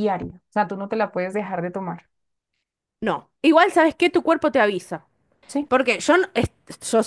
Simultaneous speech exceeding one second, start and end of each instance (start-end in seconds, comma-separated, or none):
none